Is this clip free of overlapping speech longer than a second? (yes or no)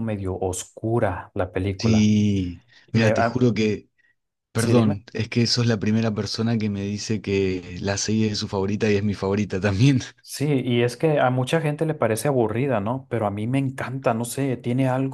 yes